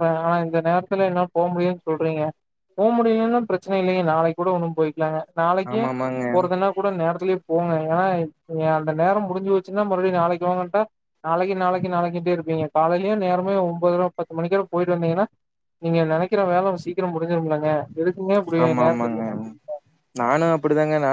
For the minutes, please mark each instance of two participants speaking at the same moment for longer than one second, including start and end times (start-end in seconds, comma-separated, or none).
none